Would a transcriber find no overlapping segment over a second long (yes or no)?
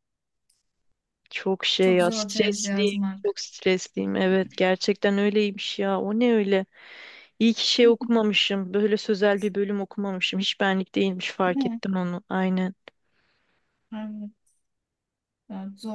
no